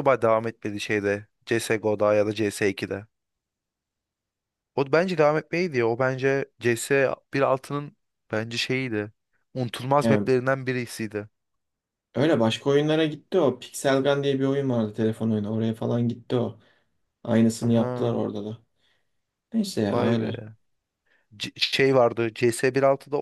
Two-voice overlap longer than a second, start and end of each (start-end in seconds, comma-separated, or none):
none